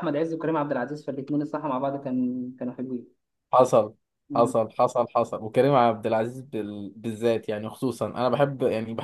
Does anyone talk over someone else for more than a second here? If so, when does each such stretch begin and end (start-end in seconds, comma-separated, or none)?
none